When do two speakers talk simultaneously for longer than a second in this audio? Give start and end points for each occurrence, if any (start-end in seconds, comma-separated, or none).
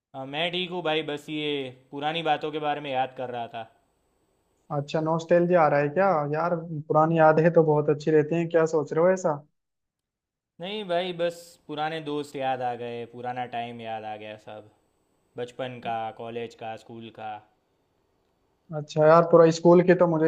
none